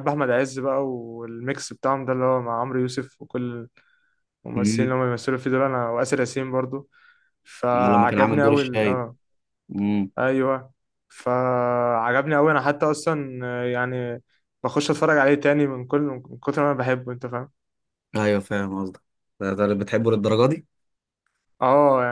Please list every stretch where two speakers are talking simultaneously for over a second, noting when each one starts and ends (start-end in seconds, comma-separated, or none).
7.7-9.1